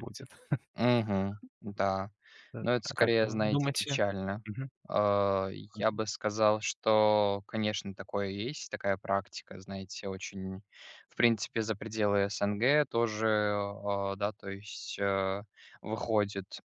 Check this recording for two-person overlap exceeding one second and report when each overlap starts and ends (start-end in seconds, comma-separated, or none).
2.6-4.0